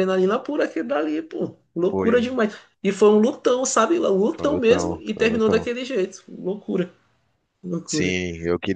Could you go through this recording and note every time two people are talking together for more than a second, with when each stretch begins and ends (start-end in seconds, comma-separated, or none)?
4.4-5.7